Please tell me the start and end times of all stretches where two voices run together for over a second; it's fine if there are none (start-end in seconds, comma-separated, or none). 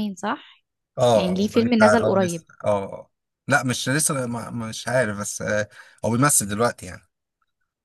1.1-2.5